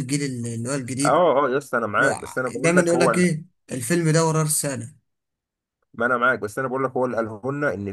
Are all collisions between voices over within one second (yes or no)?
no